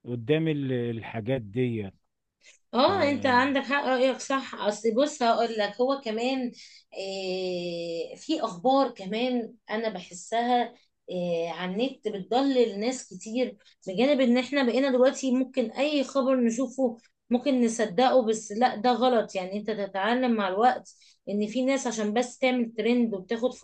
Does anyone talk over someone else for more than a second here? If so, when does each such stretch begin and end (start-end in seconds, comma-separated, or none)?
none